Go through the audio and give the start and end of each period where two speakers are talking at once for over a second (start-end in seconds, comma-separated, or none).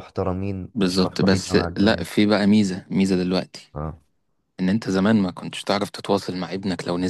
0.7-2.1